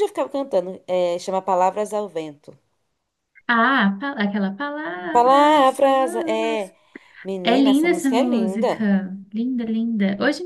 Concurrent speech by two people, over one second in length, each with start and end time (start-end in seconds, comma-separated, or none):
5.1-6.7, 7.4-8.9